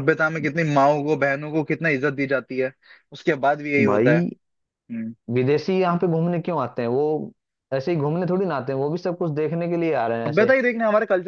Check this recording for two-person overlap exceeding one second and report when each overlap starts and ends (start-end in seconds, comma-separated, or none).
none